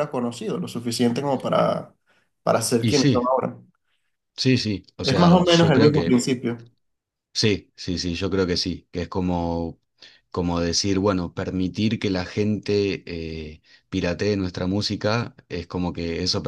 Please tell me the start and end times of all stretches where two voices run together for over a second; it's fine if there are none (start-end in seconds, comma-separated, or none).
5.0-6.2